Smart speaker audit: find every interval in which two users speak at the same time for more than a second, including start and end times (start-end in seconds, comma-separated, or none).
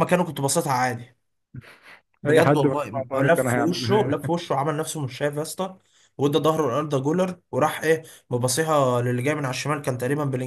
2.2-4.3